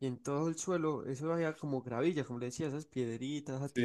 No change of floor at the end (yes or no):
no